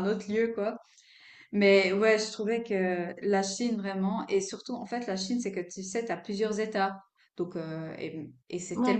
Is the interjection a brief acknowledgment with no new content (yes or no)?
yes